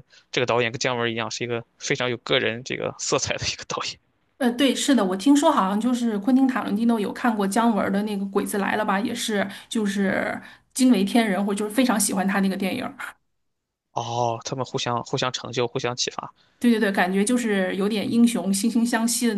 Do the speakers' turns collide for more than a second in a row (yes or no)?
no